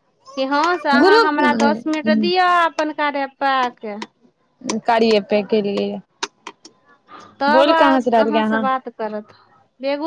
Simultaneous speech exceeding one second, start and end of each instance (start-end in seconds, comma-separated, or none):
1.0-2.5